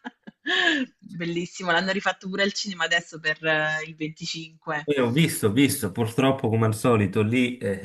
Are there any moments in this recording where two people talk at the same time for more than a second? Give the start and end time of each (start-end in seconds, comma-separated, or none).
none